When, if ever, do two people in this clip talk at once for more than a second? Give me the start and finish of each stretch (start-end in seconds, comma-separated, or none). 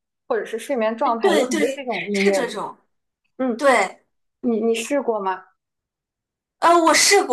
1.2-2.7